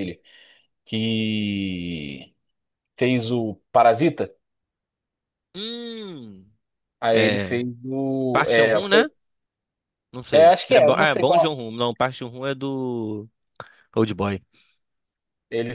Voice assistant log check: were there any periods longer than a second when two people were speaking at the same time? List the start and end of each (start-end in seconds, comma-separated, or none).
10.3-11.5